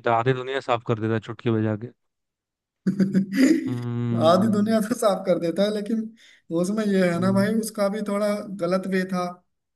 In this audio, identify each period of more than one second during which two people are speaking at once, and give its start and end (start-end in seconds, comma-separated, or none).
none